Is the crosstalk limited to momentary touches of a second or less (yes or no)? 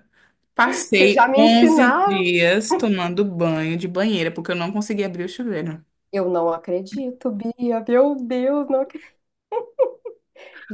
no